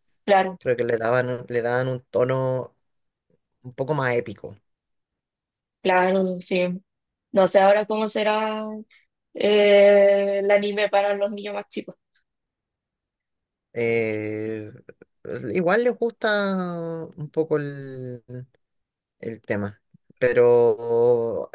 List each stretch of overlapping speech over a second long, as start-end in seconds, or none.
none